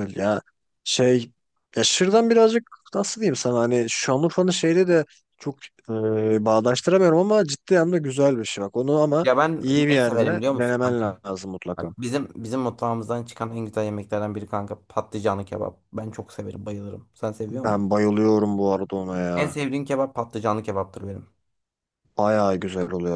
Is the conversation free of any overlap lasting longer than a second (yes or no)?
no